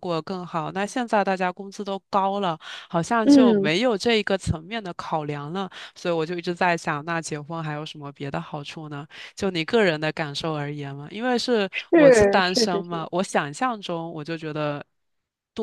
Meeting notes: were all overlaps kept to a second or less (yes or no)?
no